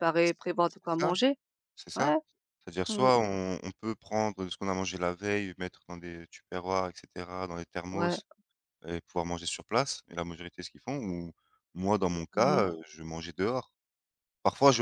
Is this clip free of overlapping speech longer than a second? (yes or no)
yes